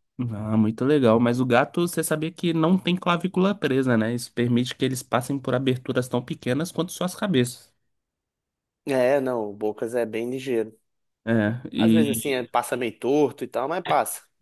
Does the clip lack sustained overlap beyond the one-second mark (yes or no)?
yes